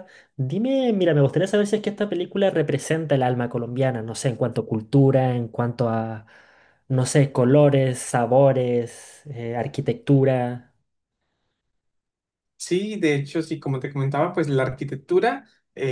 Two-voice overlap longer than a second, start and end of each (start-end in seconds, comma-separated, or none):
none